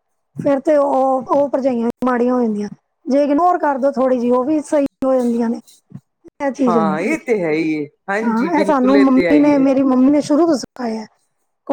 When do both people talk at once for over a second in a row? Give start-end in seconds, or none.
8.3-9.7